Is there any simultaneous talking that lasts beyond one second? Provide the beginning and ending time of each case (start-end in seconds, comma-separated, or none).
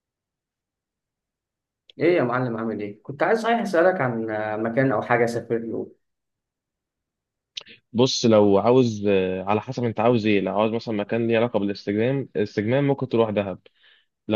none